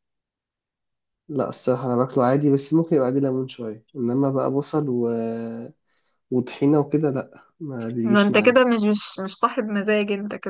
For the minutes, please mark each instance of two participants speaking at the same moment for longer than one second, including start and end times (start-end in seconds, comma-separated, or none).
none